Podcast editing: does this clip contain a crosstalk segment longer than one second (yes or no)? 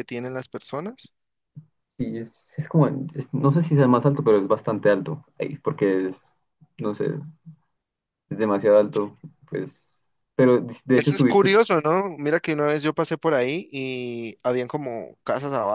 no